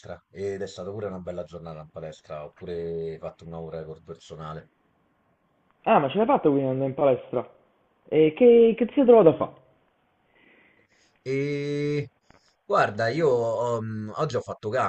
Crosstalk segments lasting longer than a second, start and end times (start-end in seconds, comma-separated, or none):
none